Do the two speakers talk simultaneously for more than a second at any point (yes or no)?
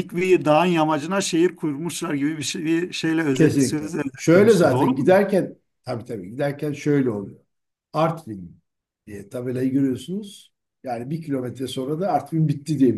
yes